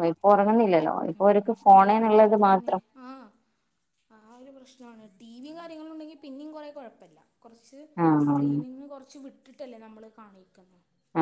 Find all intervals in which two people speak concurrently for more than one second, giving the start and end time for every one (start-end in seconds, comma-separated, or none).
none